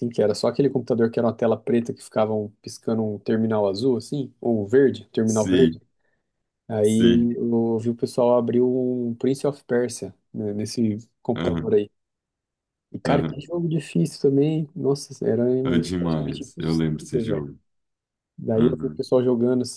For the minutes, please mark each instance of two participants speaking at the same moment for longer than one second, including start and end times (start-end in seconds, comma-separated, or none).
16.0-17.4